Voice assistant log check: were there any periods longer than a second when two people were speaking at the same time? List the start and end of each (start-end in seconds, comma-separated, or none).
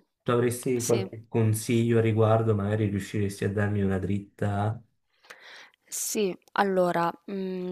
none